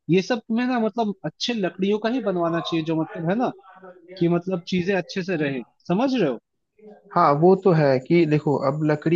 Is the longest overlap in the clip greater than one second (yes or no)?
no